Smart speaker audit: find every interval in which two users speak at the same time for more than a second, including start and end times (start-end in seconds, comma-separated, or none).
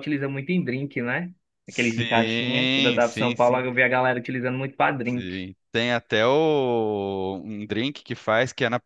1.6-3.6